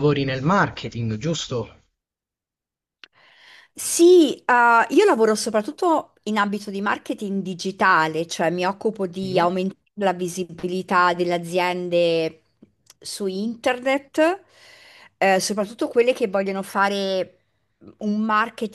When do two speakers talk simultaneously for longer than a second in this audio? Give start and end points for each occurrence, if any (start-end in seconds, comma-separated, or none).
none